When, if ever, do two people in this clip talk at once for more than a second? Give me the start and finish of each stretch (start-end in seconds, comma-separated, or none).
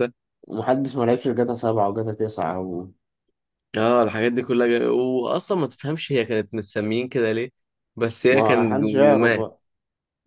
8.3-9.5